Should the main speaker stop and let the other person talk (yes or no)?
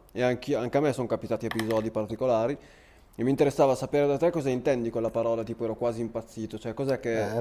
yes